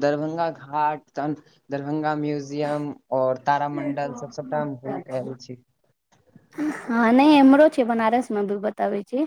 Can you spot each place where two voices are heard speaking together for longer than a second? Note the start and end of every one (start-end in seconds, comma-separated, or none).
none